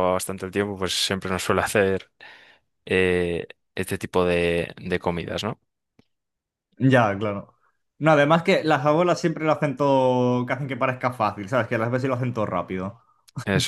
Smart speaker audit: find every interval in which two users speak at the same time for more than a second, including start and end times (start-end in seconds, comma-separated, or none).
none